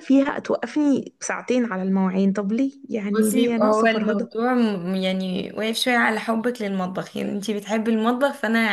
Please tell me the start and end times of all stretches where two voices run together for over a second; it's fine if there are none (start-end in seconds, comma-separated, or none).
3.1-4.3